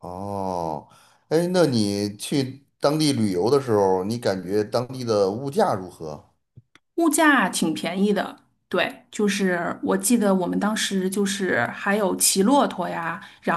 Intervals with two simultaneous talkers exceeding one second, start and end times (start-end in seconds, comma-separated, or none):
none